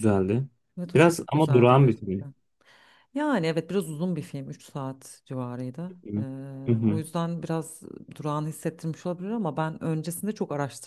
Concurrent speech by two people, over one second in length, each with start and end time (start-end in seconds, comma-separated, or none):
0.9-2.3